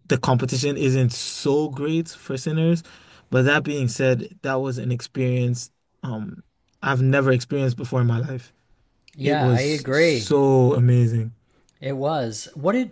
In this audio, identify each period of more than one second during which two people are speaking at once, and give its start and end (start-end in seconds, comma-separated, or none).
9.2-10.4